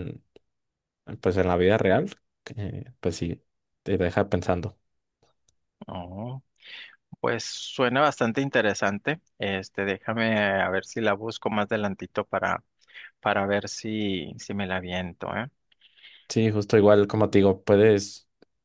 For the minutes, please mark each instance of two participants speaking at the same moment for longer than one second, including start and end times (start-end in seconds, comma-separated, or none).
none